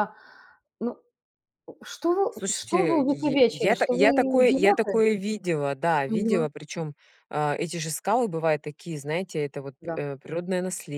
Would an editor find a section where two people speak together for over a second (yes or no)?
yes